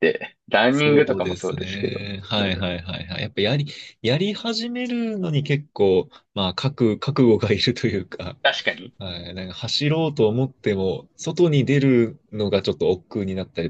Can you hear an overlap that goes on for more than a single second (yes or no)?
yes